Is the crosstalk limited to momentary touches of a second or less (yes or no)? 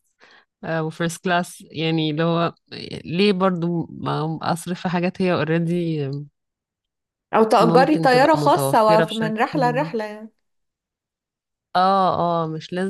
no